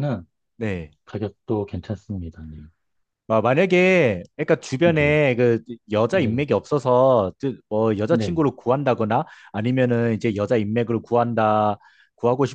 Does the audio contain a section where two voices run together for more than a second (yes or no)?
no